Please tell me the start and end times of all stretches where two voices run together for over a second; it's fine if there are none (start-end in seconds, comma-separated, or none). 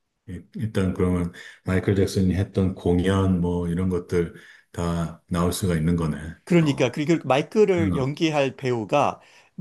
none